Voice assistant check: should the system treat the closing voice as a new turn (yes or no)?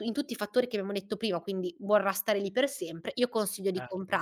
no